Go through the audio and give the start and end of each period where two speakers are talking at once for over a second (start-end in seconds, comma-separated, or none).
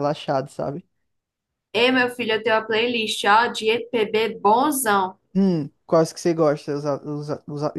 none